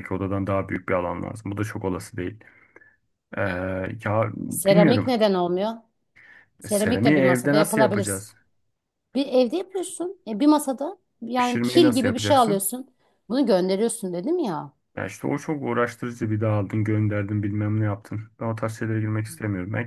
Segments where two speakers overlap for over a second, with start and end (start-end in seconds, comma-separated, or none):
6.6-8.3, 11.4-12.7